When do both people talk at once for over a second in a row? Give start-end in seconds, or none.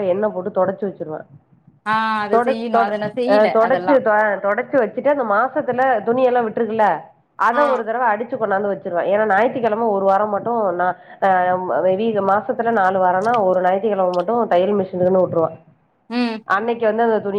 none